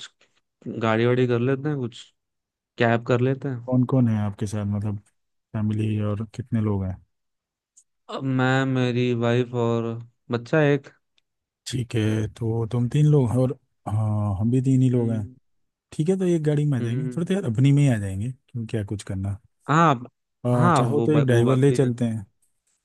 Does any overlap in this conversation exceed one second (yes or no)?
yes